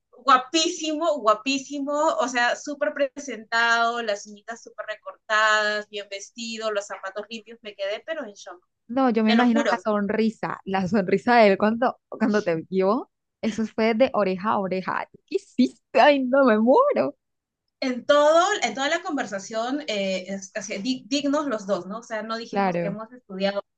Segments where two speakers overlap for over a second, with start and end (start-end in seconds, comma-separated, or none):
none